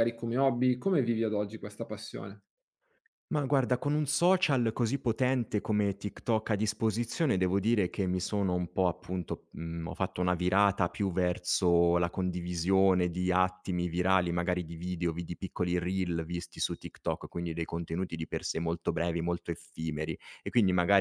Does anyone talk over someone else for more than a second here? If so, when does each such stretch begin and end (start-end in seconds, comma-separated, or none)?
none